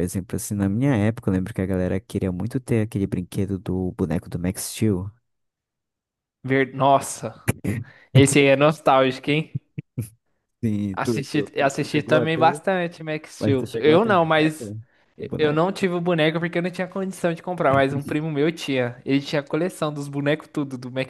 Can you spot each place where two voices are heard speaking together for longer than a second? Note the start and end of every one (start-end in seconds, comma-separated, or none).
10.9-12.6, 13.4-14.7